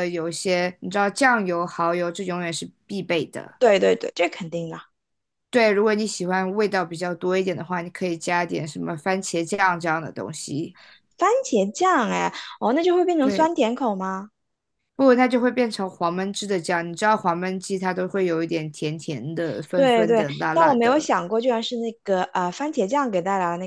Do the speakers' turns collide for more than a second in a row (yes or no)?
yes